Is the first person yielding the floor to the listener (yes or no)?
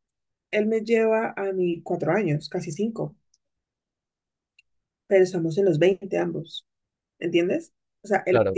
no